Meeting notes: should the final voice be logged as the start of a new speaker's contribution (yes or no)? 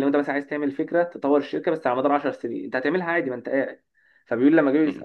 no